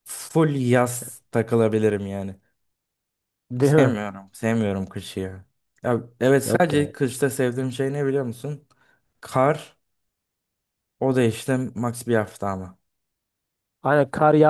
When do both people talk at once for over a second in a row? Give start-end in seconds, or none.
none